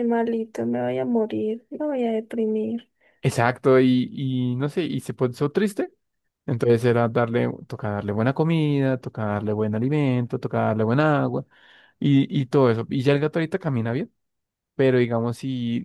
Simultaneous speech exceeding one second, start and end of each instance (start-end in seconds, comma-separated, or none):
none